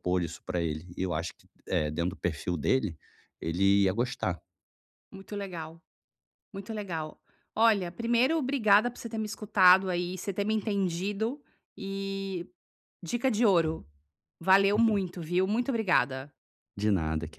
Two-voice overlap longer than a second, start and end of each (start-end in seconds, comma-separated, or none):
none